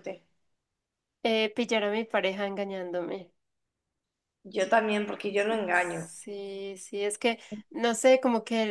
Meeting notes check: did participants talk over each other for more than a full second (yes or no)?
no